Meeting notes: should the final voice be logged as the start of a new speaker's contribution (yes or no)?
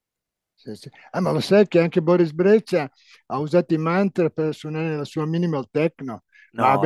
no